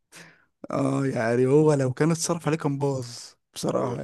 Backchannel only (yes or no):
no